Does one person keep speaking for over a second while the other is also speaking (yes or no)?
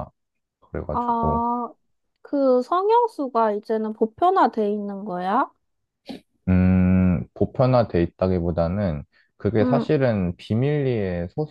no